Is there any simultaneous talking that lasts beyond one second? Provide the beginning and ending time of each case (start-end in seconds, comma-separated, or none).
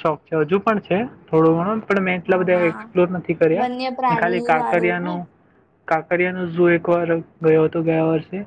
3.6-5.1